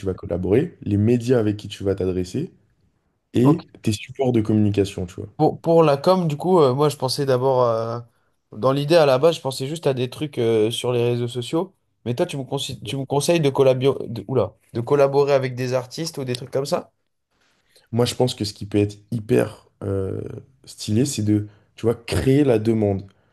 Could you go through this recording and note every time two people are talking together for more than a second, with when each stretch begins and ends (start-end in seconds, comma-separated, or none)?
none